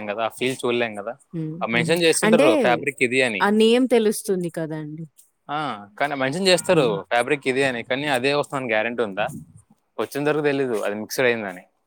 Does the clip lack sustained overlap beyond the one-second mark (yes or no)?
yes